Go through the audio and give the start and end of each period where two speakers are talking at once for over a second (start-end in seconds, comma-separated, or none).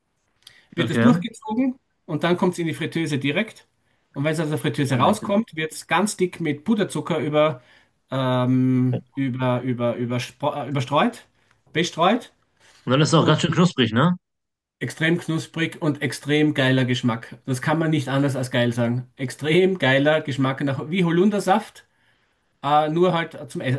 none